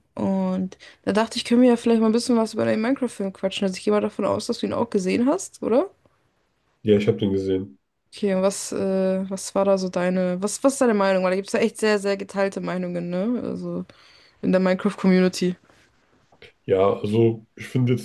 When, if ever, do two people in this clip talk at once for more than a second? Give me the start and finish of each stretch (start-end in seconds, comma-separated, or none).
none